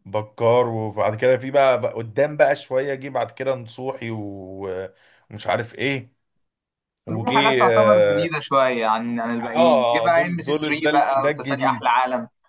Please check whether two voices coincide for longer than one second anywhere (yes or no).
yes